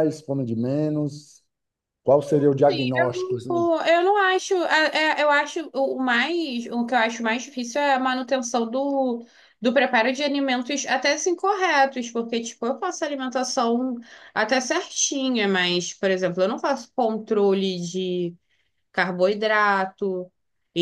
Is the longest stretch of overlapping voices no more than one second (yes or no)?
yes